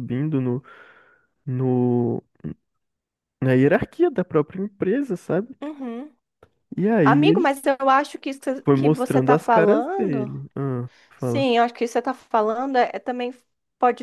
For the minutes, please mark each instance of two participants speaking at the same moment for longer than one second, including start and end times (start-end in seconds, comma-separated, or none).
8.6-10.3